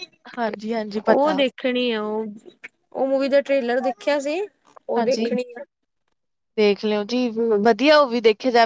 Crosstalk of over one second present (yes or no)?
no